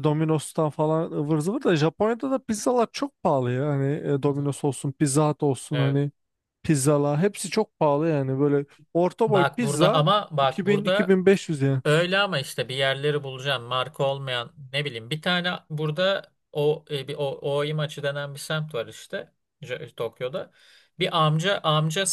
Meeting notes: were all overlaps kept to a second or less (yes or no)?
no